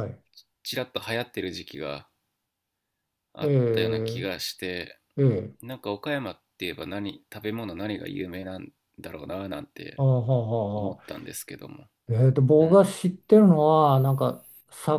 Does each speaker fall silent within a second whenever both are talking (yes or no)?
yes